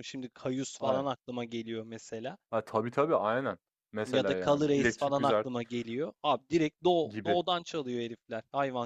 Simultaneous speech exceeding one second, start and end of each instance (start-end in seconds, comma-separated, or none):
4.0-5.5